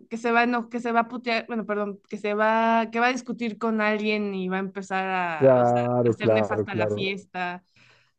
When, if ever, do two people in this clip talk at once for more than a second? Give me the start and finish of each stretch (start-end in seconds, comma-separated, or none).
5.4-7.1